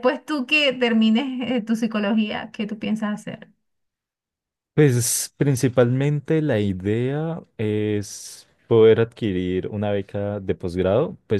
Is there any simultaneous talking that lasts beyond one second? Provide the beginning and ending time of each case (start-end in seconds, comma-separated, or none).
none